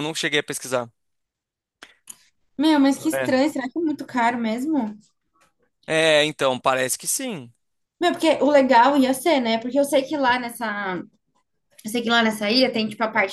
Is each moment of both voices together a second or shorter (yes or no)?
yes